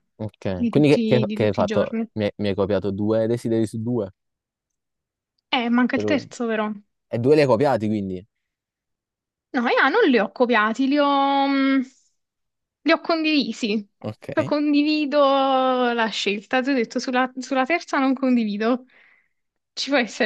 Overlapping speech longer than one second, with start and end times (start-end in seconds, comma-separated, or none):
0.5-2.1